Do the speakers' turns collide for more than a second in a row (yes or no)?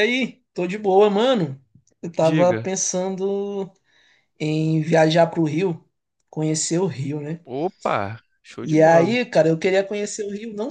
no